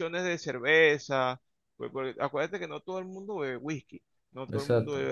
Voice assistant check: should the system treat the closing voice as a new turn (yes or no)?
no